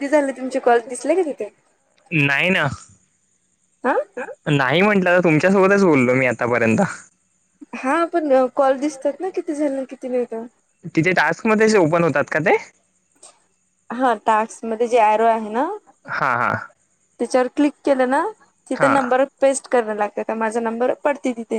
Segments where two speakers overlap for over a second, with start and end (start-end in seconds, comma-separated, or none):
none